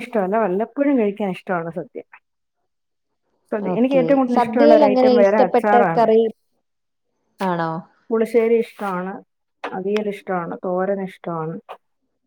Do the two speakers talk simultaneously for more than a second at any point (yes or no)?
yes